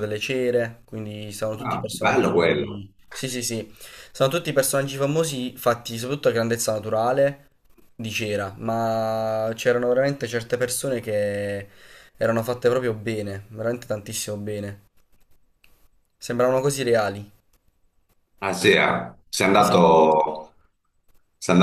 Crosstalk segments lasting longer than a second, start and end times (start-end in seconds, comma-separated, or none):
1.6-2.8